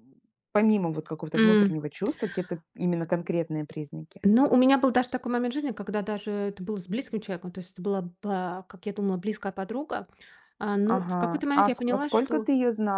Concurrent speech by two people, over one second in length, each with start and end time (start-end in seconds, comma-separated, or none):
10.8-12.5